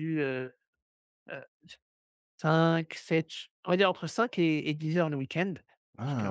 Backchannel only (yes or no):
yes